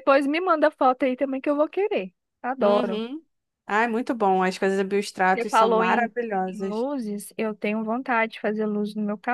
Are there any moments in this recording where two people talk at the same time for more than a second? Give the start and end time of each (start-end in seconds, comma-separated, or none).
5.3-6.9